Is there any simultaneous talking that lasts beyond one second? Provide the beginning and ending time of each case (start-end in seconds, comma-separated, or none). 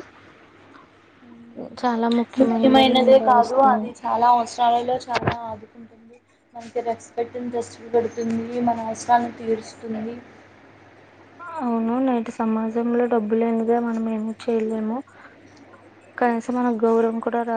2.4-3.9